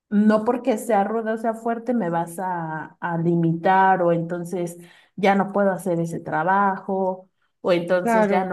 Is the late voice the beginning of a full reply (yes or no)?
no